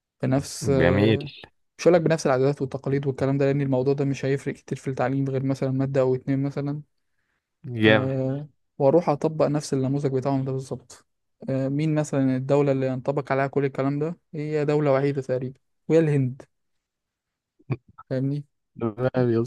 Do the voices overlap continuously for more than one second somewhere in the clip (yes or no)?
no